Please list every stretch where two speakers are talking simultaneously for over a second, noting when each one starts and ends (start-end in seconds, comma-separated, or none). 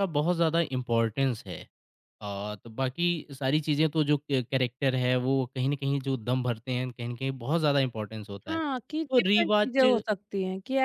8.5-9.8